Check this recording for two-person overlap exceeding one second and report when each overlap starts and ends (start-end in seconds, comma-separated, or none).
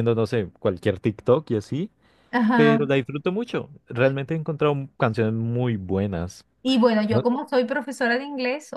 none